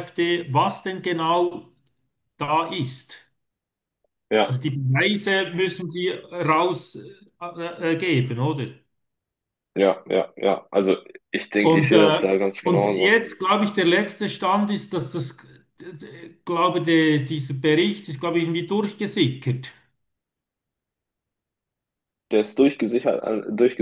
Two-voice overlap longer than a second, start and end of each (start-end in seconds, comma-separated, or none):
11.6-13.1